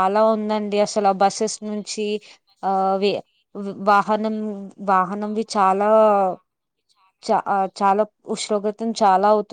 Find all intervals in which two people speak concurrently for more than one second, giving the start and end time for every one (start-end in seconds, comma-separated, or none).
0.5-2.1